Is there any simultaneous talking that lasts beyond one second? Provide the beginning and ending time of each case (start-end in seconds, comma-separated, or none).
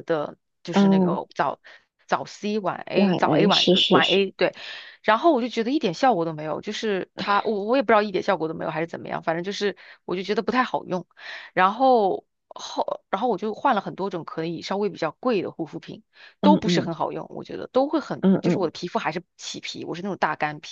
2.9-4.2